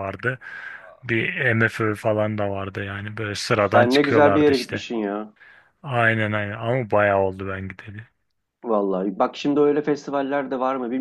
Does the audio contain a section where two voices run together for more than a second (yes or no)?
yes